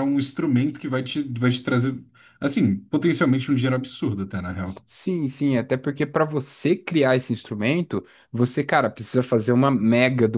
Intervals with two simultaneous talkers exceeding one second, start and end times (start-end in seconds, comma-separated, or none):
none